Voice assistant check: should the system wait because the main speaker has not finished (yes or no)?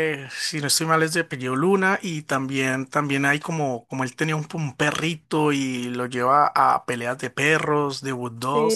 no